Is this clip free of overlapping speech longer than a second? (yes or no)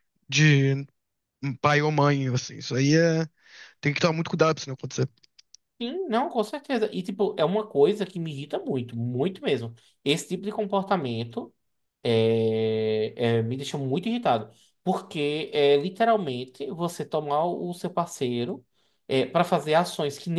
yes